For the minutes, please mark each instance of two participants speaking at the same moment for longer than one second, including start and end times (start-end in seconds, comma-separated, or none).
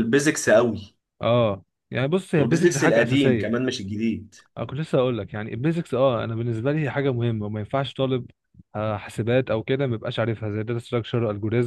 2.4-3.7